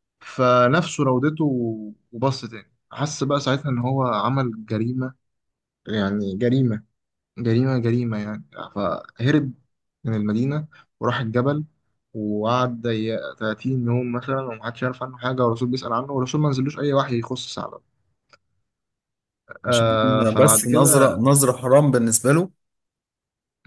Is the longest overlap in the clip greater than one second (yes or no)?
yes